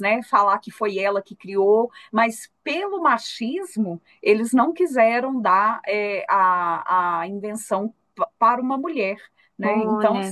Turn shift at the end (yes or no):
yes